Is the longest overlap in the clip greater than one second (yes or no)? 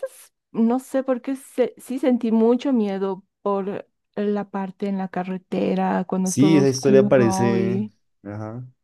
yes